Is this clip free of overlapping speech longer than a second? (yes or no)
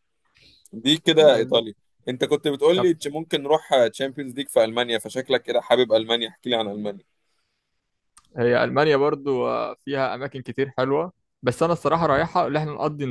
yes